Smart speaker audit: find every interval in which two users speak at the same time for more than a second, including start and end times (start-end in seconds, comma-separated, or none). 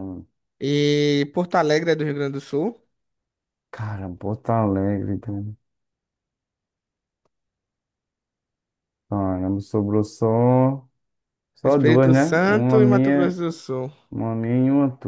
11.6-13.4